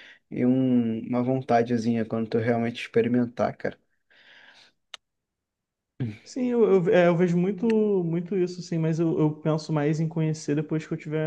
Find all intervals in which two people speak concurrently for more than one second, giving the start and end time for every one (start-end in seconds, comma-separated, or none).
none